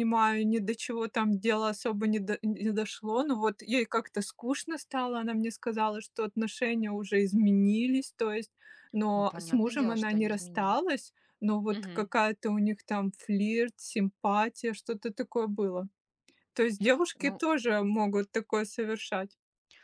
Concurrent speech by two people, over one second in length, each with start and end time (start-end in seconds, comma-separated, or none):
9.1-10.8